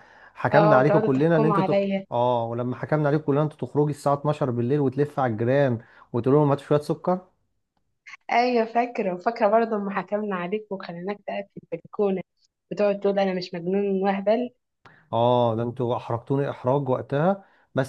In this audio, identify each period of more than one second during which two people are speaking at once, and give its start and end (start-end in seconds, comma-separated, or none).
0.5-2.0